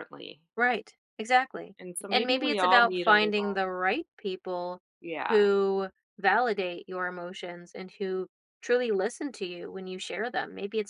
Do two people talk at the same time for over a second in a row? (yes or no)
yes